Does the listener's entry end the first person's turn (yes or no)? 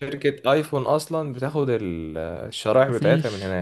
yes